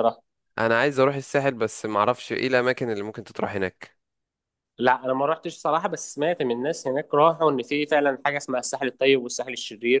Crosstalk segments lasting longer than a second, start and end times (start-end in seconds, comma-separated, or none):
none